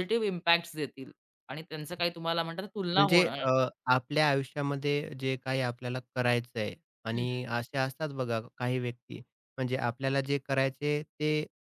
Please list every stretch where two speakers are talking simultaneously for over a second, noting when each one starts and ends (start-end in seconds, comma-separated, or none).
none